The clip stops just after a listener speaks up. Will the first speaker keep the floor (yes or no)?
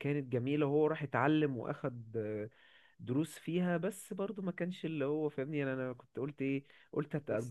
yes